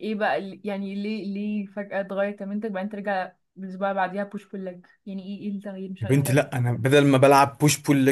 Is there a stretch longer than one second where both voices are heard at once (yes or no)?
no